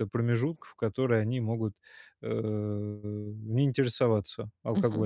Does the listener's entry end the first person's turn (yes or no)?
yes